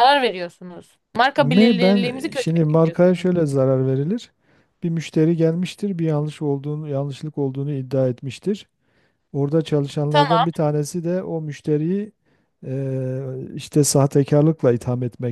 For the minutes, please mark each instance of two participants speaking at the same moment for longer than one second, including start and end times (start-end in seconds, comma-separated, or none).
1.4-3.3